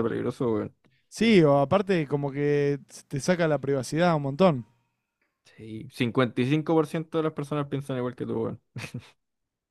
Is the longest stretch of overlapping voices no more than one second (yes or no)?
yes